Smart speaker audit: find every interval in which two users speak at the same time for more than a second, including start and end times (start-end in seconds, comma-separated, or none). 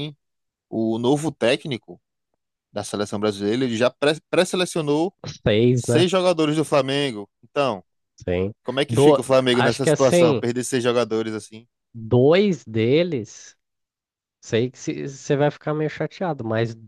8.9-10.4